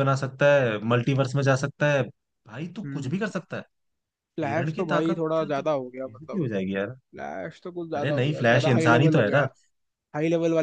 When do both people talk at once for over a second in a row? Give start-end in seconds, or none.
4.4-6.4, 7.9-9.4